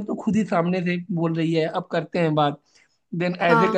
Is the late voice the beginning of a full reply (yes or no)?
no